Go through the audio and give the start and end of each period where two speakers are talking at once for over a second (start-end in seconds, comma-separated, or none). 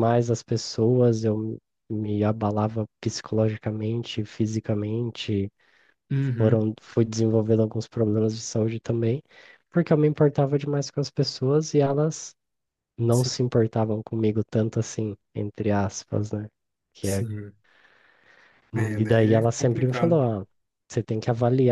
19.0-20.2